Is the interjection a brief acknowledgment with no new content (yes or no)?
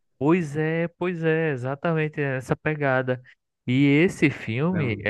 yes